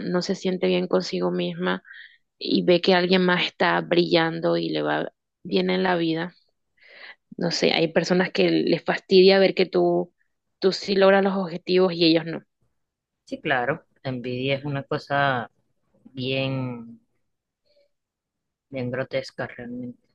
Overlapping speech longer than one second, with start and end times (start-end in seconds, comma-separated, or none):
none